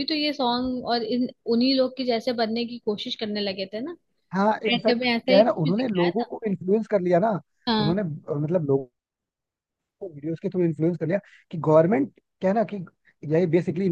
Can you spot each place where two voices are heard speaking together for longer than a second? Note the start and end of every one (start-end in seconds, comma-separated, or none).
4.7-6.3